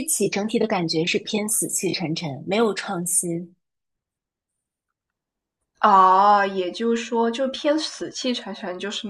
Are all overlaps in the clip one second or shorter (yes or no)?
yes